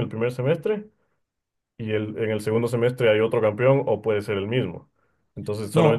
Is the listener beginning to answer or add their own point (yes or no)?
no